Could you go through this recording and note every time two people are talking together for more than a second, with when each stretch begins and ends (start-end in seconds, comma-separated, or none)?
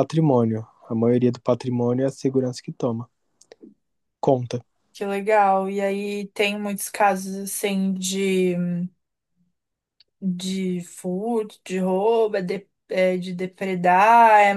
none